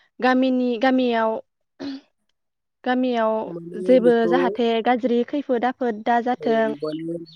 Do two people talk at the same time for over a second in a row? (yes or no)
no